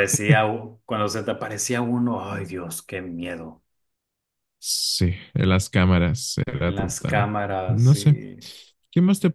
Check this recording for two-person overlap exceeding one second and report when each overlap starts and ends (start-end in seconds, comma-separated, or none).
6.6-8.2